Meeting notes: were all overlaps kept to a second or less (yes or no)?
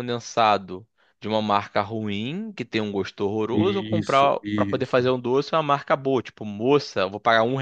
no